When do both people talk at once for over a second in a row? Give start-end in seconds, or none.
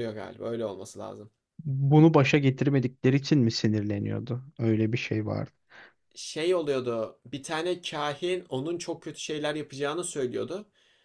none